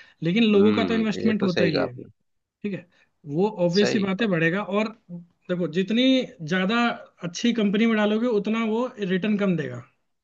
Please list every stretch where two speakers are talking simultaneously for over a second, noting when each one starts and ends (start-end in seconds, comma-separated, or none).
0.5-1.9